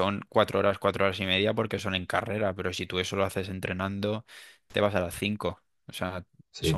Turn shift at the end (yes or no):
no